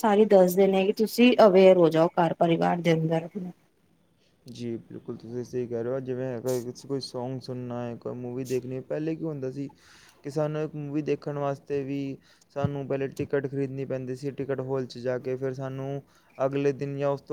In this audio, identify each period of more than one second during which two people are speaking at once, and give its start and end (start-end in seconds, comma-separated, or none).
none